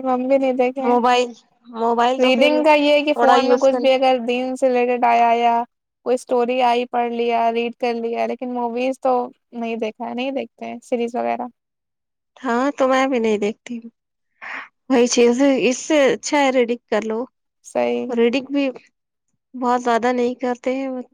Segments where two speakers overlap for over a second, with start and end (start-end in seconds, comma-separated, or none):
2.2-4.0